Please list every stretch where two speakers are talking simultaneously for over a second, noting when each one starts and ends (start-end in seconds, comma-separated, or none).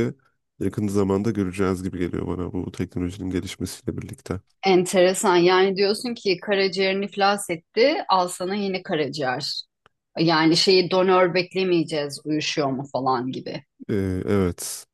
none